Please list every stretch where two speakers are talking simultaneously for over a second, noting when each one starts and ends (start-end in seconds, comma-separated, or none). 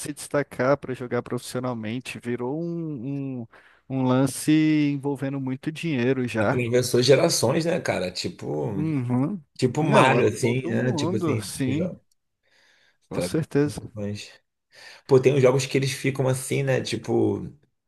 9.8-12.0